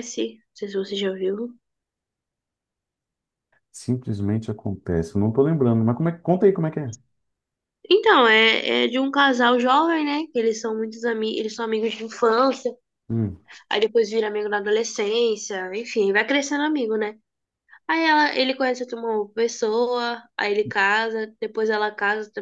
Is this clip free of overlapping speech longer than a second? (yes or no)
yes